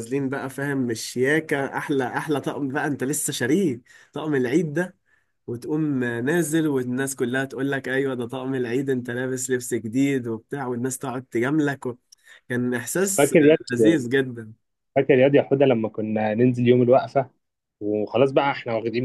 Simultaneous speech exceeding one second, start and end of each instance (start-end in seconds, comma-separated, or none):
none